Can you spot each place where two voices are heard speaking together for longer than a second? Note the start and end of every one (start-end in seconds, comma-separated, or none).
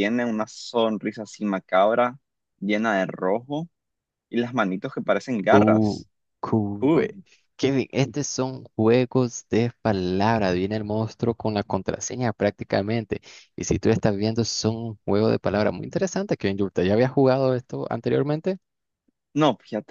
none